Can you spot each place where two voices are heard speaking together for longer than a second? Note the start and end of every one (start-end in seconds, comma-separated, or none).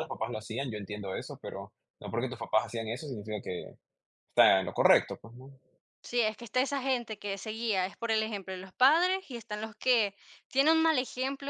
none